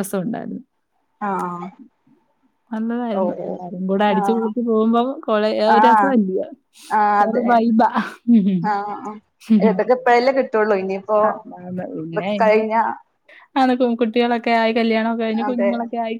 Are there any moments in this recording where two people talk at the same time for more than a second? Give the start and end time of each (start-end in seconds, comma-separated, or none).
3.2-4.5